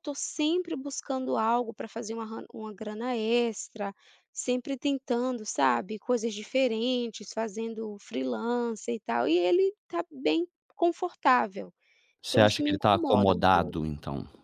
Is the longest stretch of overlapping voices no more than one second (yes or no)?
no